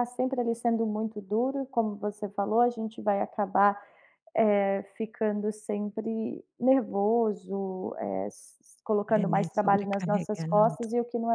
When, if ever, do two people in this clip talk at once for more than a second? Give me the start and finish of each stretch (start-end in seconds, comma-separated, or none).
9.2-10.8